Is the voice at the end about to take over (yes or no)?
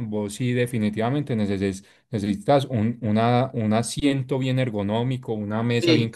no